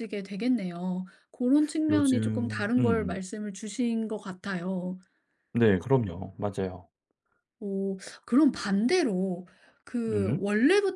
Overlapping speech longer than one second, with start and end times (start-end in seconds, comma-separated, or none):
1.9-3.2